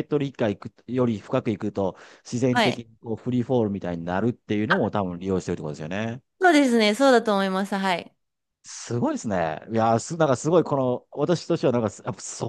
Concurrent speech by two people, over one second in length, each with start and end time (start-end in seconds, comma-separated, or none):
none